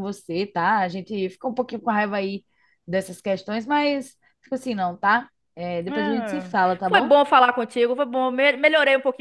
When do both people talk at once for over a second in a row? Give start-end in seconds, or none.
5.9-7.2